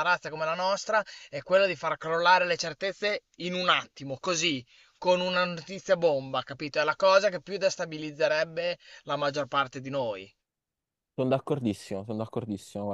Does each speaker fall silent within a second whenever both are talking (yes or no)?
yes